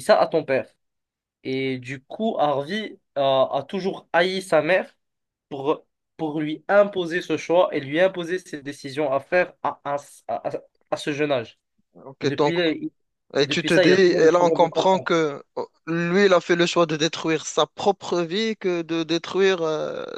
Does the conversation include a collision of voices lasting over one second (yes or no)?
yes